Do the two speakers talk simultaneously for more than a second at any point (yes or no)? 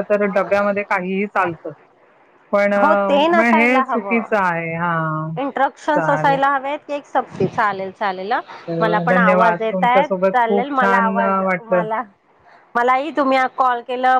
yes